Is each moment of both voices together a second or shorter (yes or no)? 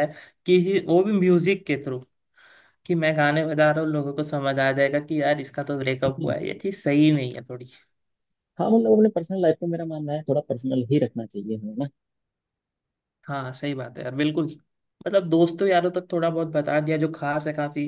yes